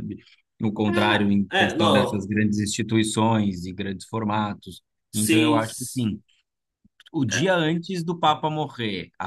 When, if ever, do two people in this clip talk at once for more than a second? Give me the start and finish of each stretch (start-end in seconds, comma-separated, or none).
0.9-2.3